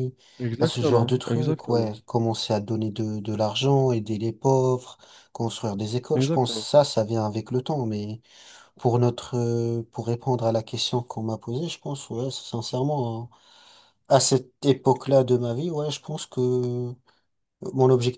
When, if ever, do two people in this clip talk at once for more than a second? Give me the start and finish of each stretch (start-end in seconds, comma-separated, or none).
0.6-1.9